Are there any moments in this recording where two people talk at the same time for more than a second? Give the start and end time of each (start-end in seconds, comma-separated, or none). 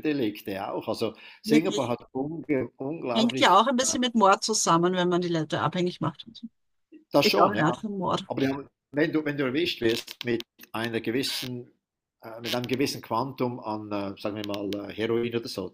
none